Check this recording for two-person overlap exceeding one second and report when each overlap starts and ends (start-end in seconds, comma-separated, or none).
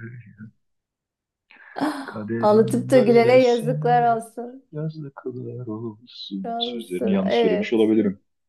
2.4-4.2, 6.4-7.9